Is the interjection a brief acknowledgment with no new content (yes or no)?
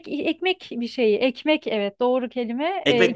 yes